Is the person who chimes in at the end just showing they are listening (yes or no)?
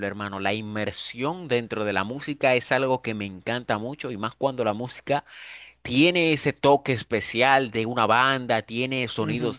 yes